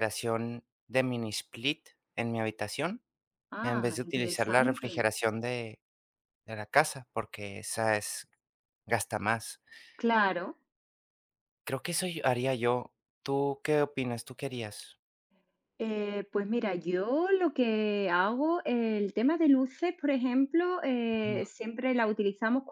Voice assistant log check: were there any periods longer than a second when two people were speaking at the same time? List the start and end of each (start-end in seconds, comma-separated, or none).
3.6-5.0